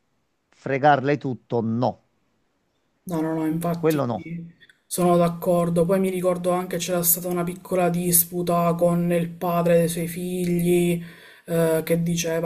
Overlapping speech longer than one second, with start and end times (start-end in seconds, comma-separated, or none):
none